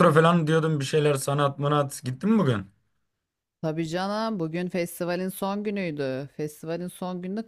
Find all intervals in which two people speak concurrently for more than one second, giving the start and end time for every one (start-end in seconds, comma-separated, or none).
none